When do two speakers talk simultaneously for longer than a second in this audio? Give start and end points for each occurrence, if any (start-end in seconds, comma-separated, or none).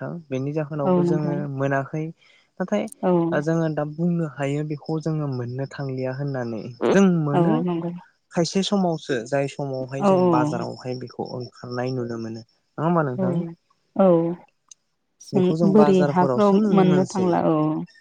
15.3-17.3